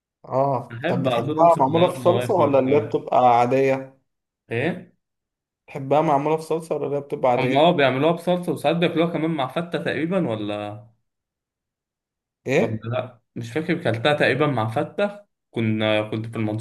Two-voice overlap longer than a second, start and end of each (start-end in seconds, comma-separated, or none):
0.7-2.9